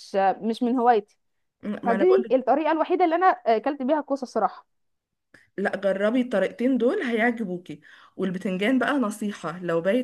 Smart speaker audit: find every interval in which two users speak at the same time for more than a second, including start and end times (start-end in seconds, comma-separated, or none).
none